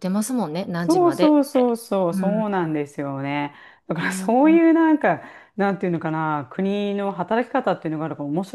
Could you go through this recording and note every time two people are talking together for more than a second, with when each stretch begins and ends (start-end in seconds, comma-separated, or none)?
0.8-2.7